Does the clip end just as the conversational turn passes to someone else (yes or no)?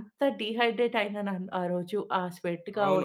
yes